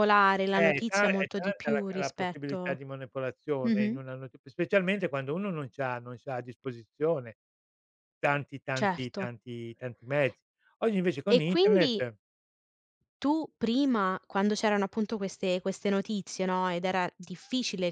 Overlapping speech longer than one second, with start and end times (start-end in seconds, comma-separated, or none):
0.5-2.8